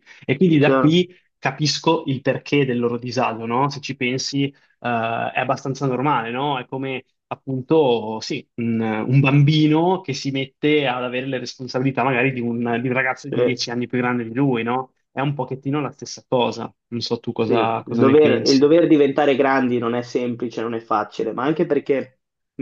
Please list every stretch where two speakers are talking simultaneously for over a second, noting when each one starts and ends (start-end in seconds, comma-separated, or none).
17.4-18.7